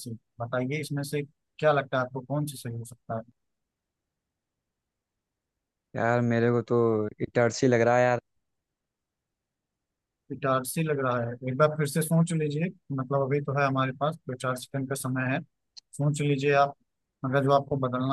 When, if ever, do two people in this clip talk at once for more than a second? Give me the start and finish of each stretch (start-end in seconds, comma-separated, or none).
none